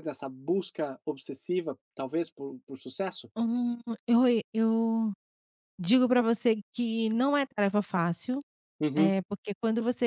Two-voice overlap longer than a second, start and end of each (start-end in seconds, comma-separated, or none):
none